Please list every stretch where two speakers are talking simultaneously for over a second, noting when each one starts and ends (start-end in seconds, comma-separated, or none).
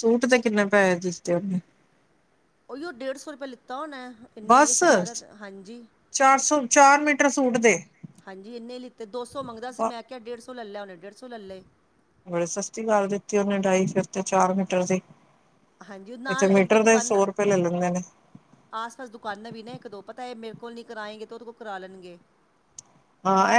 none